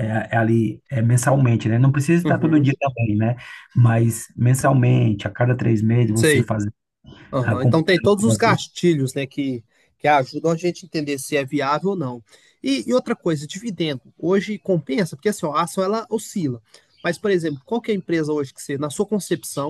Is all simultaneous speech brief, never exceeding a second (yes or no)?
no